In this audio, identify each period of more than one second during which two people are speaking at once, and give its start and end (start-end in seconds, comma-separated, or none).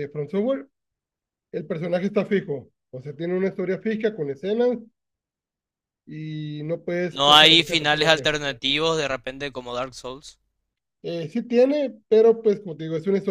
7.1-8.3